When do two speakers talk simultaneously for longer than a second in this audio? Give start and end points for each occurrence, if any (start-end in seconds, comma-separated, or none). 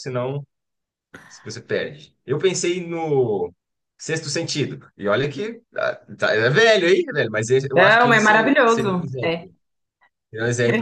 7.7-9.5